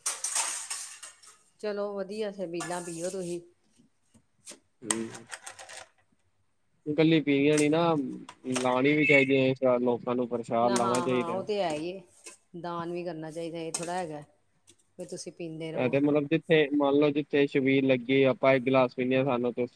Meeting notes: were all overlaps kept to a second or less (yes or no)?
yes